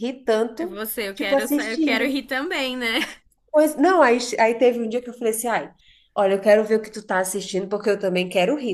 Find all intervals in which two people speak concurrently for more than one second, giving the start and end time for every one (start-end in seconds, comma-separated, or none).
0.6-2.1